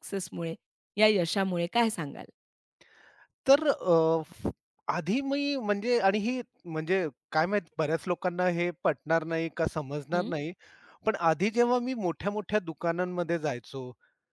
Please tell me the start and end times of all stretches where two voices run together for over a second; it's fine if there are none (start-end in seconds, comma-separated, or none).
none